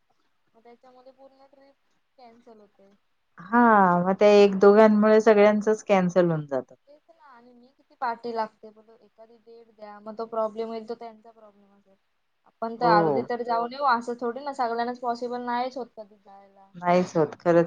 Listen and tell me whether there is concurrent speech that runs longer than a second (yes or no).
no